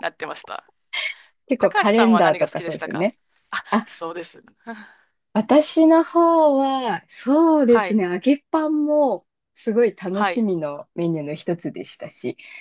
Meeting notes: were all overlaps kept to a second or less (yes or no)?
no